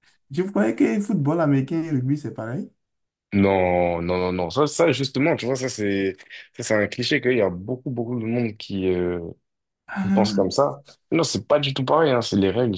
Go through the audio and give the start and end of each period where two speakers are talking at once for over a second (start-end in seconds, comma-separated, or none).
none